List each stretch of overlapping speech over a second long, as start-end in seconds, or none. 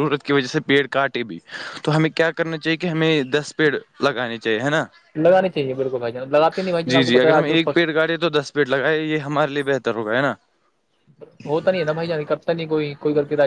none